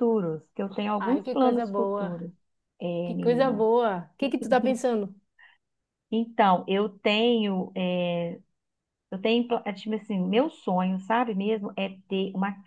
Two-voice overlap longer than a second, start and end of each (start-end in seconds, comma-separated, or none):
1.0-2.2